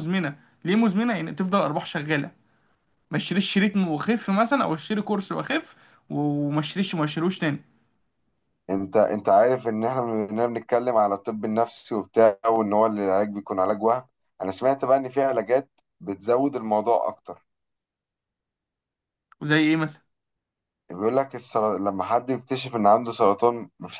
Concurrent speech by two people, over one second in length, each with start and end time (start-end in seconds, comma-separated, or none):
none